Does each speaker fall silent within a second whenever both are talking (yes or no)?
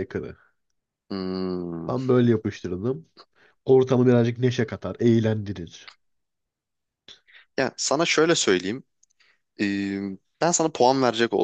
yes